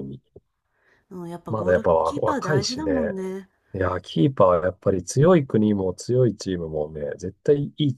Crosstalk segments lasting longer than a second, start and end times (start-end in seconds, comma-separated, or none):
1.5-3.1